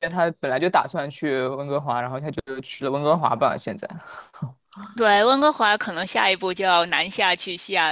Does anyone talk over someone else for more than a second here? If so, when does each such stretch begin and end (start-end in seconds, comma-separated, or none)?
none